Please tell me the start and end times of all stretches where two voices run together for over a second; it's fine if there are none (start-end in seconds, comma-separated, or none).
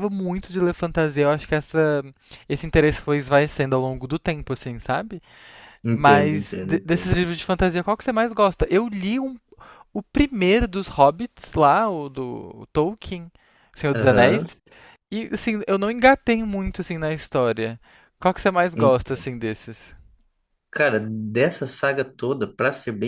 5.9-7.2